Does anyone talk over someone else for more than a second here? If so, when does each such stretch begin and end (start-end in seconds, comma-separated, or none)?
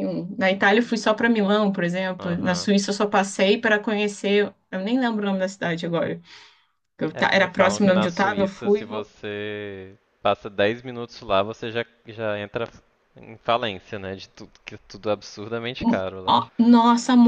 7.1-9.1